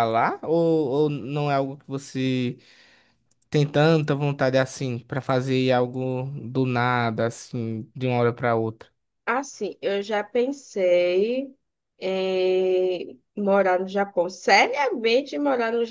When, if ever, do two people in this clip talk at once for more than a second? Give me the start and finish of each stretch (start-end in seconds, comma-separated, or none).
none